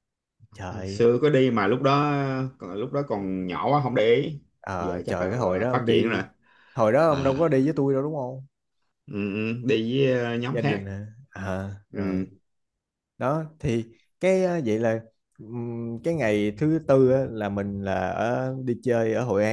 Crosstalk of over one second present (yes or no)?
yes